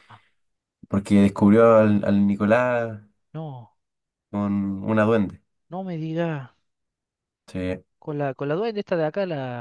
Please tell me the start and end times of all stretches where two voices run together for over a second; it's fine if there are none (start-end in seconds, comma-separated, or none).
none